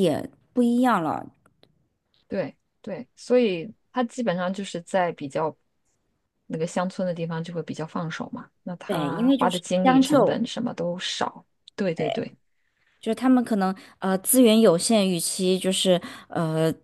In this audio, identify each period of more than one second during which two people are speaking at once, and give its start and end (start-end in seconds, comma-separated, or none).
8.9-10.4